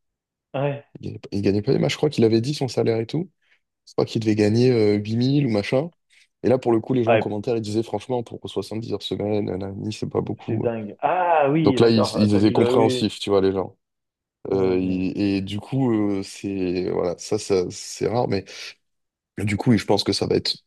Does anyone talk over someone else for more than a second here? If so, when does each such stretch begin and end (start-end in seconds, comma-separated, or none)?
11.6-13.1